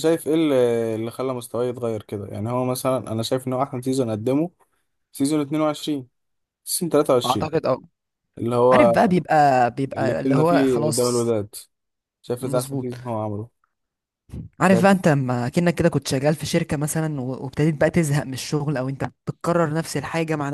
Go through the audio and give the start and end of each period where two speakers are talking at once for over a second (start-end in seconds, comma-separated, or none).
9.9-11.3